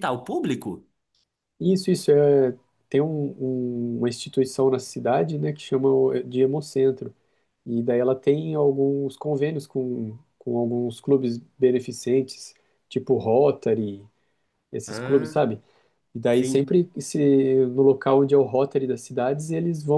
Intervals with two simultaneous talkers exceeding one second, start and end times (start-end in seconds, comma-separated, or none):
none